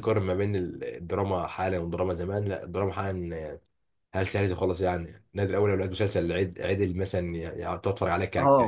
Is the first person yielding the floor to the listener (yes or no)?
no